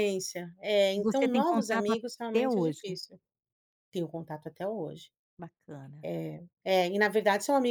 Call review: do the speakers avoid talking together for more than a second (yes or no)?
no